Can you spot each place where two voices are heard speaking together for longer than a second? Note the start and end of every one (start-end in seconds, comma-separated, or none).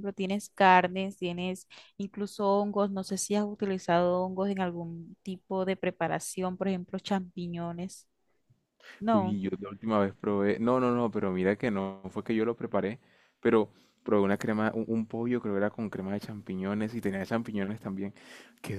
none